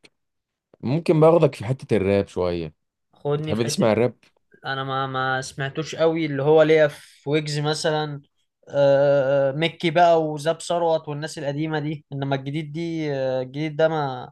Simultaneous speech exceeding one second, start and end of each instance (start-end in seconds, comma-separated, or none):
none